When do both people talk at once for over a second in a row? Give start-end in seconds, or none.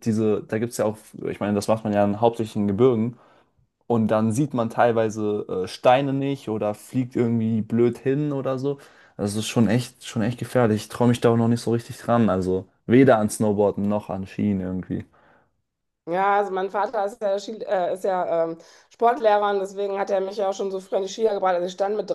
none